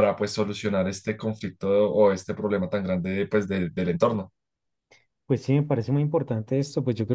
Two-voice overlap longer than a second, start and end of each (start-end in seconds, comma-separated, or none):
none